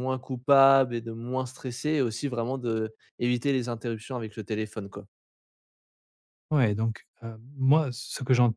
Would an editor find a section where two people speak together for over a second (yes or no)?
no